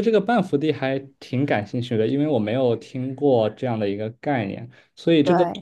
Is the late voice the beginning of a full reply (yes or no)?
no